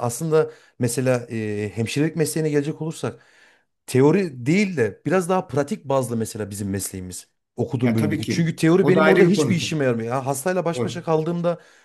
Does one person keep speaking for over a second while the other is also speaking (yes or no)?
yes